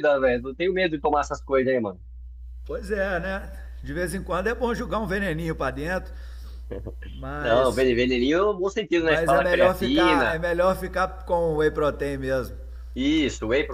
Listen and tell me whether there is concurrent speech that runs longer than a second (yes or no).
yes